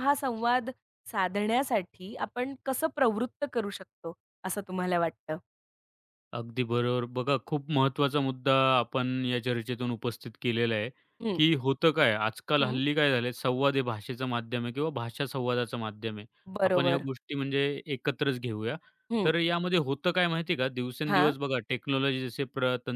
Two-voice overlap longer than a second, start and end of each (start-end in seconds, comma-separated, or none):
none